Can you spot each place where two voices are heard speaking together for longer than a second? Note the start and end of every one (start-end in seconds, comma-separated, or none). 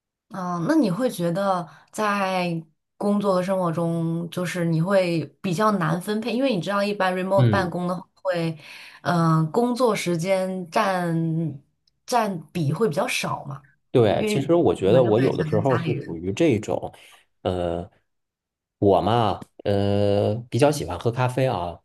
14.2-16.2